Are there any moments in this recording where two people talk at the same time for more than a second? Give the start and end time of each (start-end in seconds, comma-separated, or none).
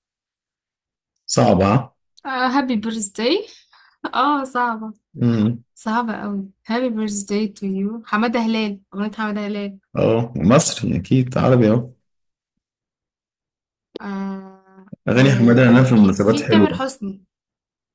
15.1-16.9